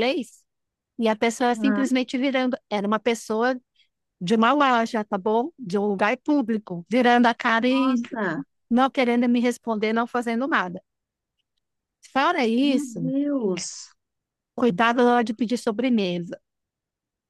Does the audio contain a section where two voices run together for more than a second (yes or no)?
no